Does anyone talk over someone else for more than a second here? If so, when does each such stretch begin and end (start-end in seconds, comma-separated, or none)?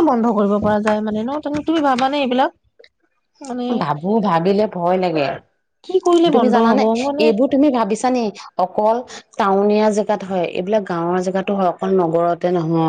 none